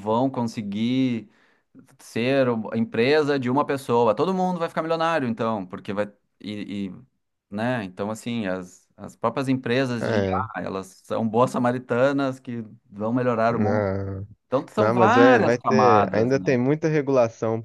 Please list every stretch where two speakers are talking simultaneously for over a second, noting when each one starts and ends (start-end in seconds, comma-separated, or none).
14.8-16.5